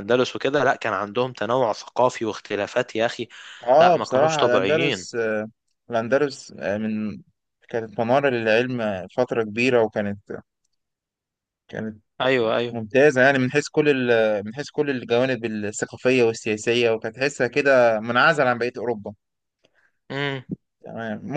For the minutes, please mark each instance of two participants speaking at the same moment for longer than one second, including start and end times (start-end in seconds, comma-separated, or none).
3.8-5.1